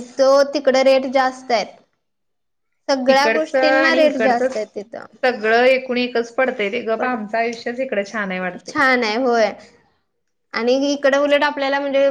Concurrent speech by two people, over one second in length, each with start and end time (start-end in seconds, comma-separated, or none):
3.1-4.5